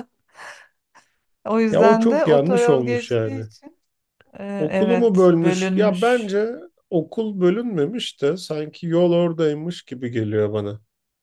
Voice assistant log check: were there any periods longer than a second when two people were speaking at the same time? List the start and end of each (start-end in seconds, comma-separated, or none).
1.7-3.5, 4.6-6.3